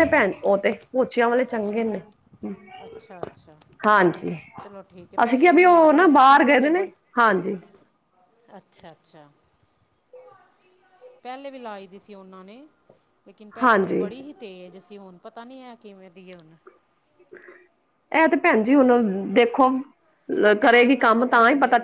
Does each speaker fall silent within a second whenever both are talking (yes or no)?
no